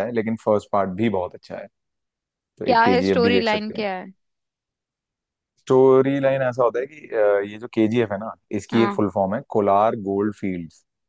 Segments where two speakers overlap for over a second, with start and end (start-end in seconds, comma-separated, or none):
2.6-3.9